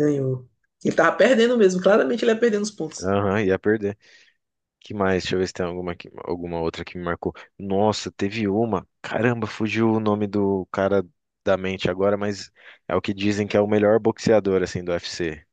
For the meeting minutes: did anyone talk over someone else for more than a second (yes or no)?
no